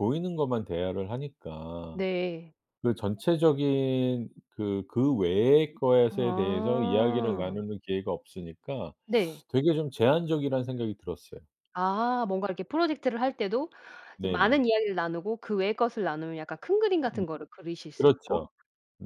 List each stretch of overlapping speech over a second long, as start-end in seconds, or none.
6.1-7.6